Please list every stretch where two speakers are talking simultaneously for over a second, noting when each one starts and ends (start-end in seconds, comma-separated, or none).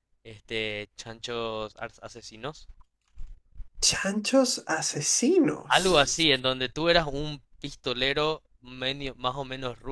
none